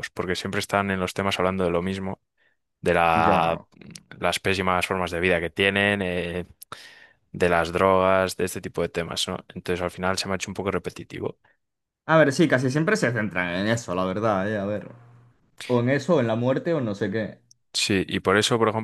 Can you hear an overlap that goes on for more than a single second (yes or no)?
no